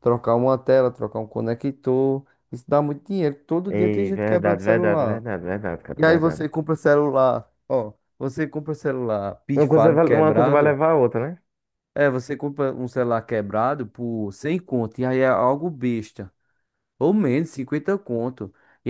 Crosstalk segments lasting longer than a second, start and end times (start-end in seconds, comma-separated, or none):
3.7-5.2, 9.6-10.8